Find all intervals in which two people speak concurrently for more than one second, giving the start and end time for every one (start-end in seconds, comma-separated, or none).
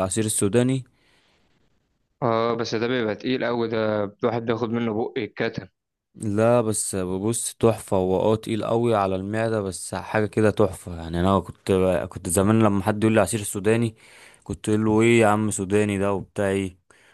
none